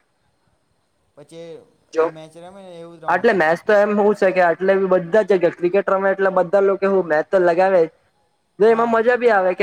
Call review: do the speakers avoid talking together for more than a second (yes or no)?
yes